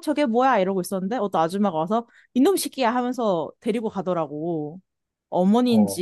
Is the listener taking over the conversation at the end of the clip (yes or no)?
no